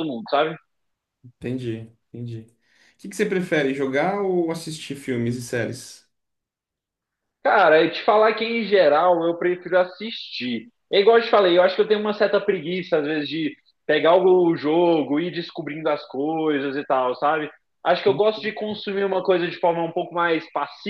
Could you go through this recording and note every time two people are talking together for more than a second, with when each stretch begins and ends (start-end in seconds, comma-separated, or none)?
none